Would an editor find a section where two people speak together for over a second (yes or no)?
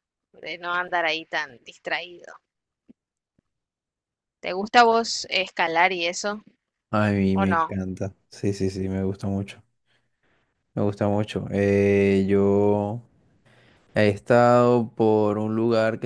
no